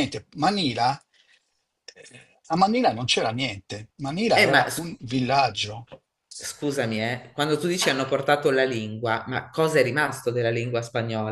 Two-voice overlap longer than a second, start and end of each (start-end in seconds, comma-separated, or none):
none